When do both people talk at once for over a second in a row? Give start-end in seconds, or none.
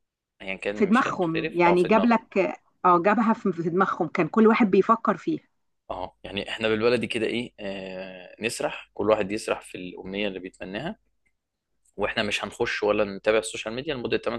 0.7-2.2